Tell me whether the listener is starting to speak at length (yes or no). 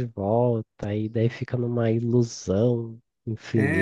yes